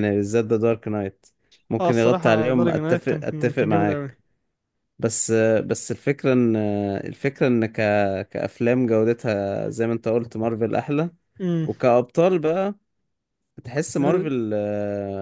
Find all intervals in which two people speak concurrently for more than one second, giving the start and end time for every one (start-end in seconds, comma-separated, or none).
1.8-4.2